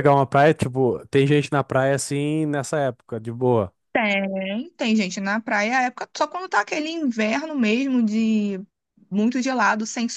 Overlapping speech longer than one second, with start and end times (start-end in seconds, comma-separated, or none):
none